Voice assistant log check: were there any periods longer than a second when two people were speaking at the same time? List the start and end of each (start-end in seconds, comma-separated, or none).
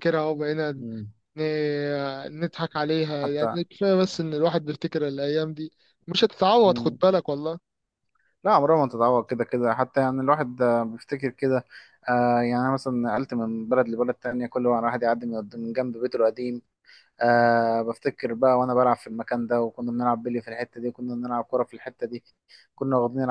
none